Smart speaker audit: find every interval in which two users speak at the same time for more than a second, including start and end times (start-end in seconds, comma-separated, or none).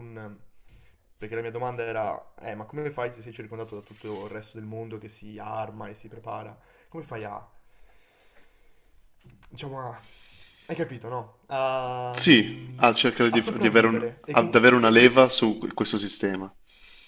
13.3-15.2